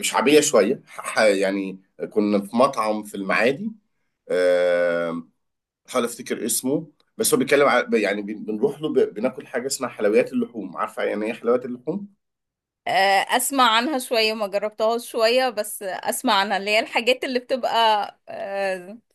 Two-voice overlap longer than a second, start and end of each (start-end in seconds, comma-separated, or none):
none